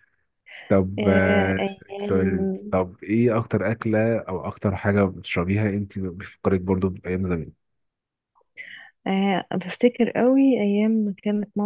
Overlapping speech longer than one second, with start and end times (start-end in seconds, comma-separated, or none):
1.0-2.8